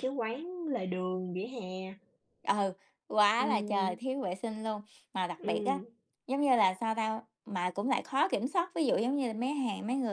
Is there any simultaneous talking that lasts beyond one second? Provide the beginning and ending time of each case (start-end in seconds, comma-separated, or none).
none